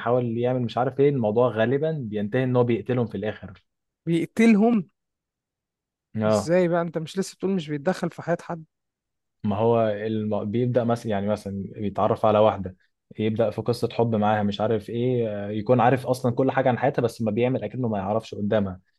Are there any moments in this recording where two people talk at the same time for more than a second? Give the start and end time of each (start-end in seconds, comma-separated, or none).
none